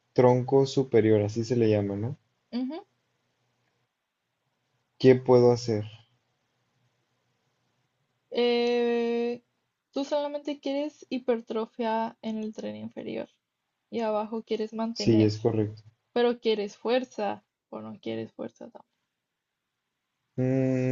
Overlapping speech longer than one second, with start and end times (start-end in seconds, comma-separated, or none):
none